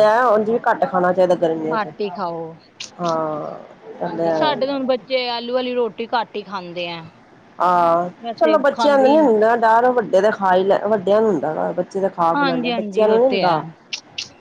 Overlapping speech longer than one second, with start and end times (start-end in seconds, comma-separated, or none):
12.3-13.6